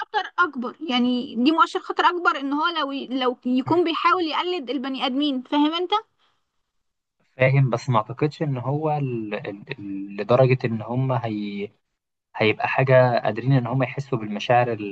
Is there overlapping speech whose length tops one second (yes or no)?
no